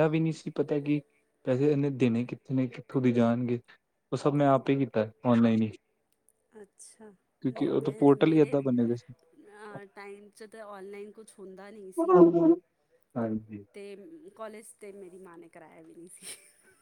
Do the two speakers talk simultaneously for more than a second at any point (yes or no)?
yes